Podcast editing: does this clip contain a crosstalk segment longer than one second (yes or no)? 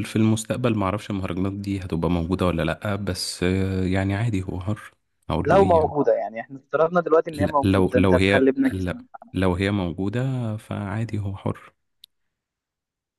yes